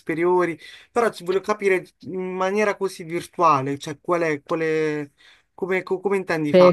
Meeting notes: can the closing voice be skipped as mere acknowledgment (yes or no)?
no